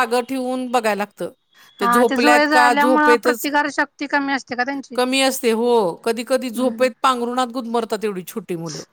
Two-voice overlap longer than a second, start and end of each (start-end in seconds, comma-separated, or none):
1.8-3.5